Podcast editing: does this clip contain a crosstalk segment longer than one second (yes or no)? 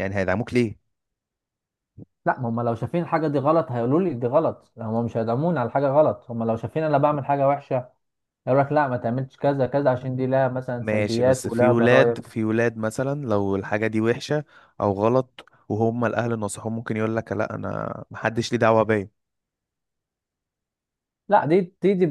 yes